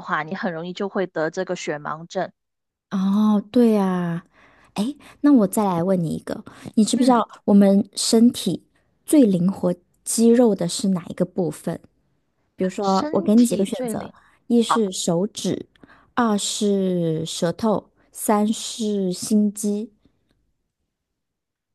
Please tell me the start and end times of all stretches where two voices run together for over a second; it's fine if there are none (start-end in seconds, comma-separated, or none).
12.8-14.1